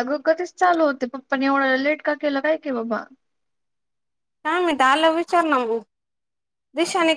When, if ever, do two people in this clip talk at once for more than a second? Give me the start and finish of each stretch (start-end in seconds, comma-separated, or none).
none